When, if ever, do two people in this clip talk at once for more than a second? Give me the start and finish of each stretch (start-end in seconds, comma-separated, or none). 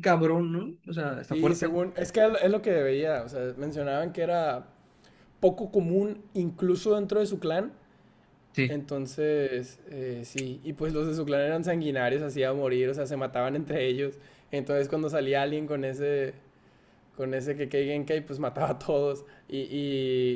none